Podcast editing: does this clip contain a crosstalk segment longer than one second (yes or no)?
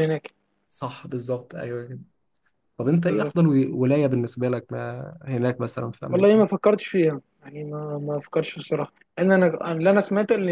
no